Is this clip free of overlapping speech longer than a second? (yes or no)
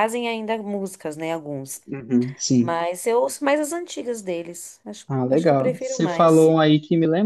no